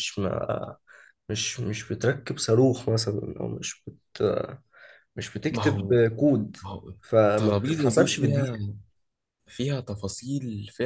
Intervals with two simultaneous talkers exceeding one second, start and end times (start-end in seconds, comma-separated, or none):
7.3-8.6